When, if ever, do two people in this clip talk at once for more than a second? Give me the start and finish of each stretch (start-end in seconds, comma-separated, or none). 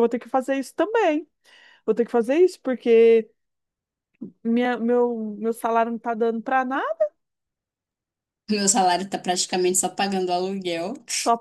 none